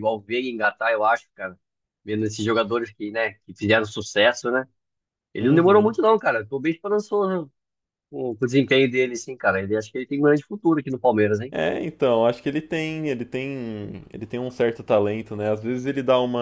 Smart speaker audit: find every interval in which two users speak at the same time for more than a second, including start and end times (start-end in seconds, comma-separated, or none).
none